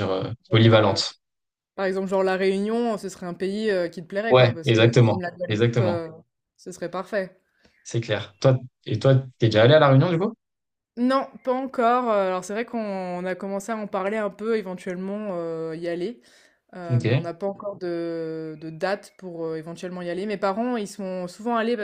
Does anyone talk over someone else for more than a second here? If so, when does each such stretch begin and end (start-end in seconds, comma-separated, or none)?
4.3-6.1